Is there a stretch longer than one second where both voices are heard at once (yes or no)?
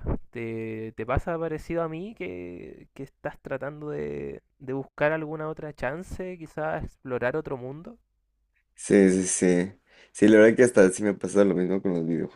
no